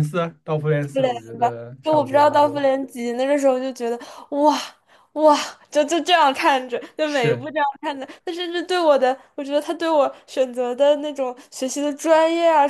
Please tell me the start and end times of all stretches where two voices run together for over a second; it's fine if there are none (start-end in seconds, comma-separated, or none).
0.9-2.6